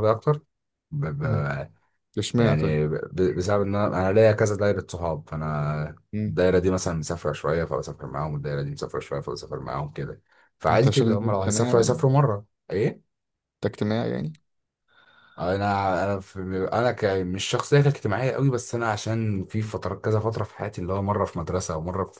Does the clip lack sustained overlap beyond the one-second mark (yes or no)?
no